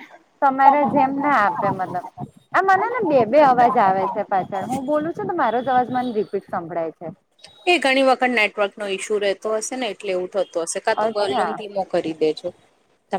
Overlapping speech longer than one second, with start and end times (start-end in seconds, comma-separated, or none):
none